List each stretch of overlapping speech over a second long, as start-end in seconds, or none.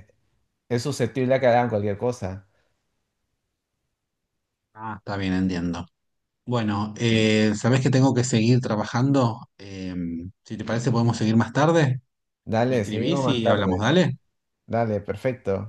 12.7-13.9